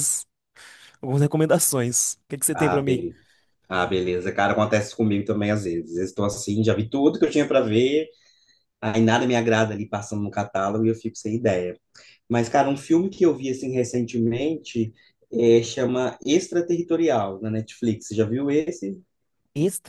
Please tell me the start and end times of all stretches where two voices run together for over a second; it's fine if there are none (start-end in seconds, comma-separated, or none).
none